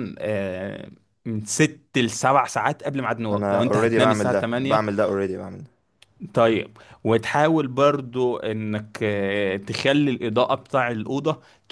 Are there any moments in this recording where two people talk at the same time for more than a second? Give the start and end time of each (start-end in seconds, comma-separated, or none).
3.3-4.8